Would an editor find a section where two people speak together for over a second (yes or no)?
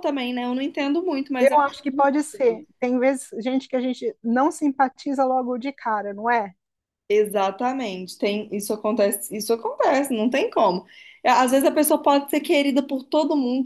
yes